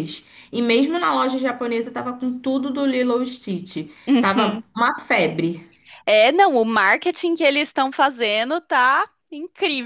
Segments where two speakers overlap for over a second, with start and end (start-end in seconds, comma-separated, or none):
none